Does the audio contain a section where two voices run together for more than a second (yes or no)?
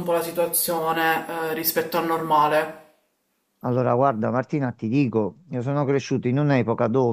no